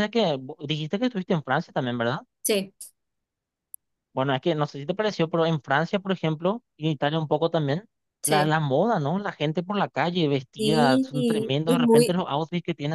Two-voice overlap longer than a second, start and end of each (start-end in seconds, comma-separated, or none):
10.6-12.2